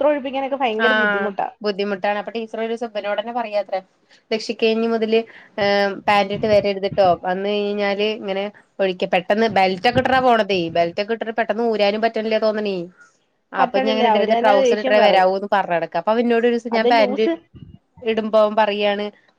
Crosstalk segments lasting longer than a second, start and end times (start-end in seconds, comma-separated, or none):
13.6-15.3